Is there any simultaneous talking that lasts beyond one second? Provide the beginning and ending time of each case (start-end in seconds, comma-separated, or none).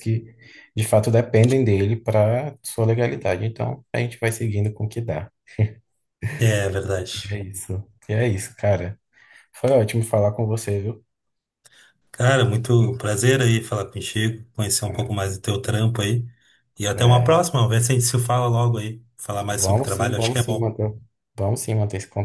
19.5-20.7